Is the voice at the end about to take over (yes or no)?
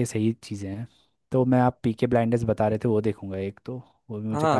yes